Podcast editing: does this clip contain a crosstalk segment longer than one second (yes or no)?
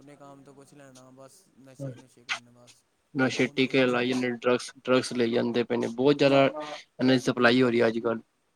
no